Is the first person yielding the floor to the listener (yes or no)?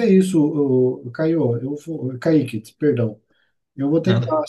no